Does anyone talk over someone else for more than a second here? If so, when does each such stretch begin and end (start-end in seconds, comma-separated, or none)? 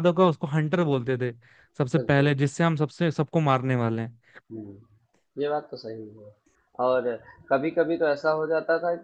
none